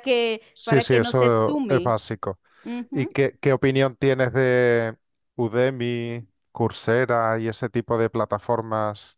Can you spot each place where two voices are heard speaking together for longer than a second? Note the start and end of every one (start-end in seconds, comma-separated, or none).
0.5-1.9